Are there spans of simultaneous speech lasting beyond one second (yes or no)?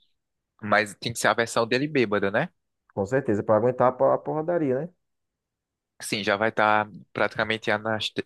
no